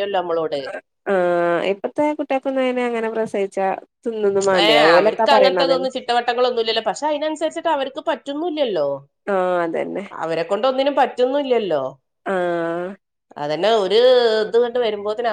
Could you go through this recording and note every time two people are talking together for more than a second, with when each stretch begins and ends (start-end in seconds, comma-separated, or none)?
none